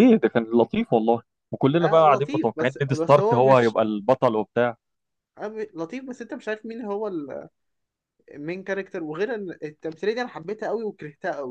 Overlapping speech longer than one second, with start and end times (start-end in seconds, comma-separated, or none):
1.8-3.8